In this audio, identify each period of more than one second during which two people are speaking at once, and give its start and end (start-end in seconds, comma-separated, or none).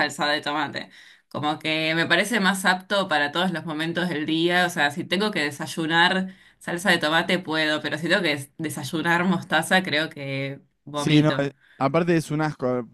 none